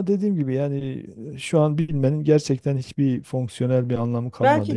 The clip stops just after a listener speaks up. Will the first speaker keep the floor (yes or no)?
no